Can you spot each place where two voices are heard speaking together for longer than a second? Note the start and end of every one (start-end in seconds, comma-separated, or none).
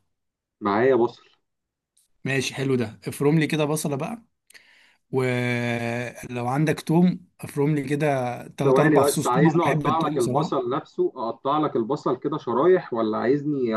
8.6-10.6